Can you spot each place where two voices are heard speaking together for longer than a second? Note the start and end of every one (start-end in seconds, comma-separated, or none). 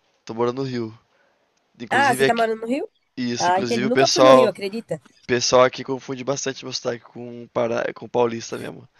3.4-4.9